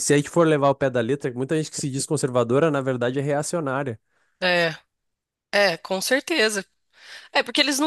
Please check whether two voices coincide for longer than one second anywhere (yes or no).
no